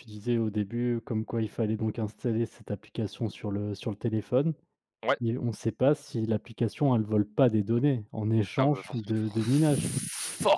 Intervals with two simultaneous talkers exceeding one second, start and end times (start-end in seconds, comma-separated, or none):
8.6-9.9